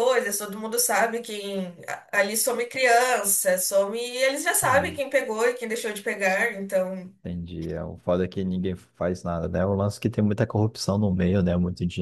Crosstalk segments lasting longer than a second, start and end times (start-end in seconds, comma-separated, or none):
none